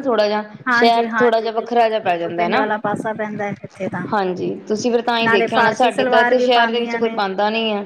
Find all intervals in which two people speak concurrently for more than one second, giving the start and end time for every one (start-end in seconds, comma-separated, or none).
0.7-2.6, 5.2-7.2